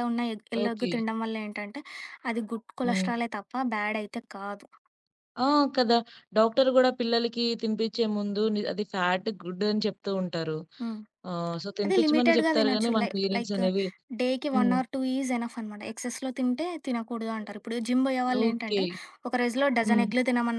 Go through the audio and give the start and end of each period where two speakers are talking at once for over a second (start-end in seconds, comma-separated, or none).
11.8-13.6